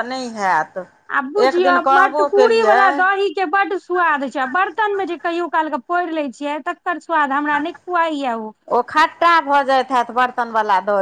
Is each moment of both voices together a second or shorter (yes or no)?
no